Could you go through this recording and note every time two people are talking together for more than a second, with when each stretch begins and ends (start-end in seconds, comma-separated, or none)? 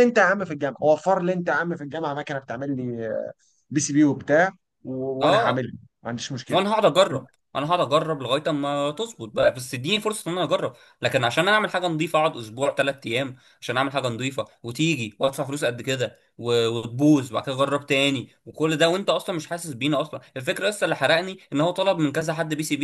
none